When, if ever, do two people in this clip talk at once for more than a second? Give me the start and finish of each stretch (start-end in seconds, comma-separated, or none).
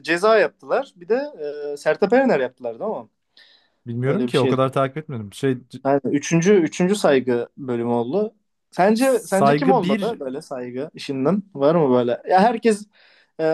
8.9-10.2